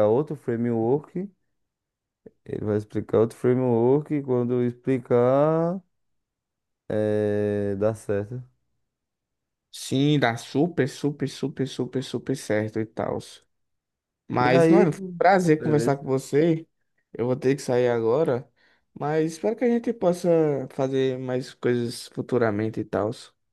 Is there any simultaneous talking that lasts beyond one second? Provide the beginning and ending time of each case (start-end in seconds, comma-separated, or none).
none